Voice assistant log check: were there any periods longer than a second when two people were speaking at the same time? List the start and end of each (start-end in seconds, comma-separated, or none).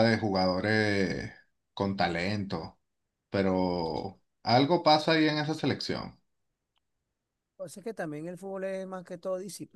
none